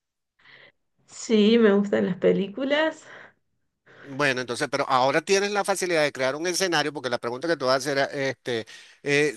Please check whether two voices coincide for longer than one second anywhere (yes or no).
no